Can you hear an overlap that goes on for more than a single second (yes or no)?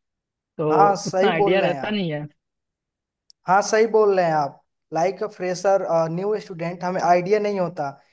yes